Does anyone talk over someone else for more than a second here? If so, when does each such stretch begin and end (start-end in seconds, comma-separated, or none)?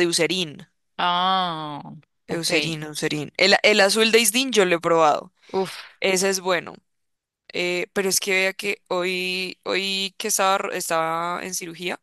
none